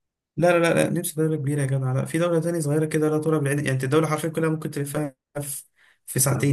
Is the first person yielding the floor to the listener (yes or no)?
no